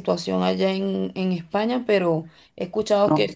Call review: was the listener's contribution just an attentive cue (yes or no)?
yes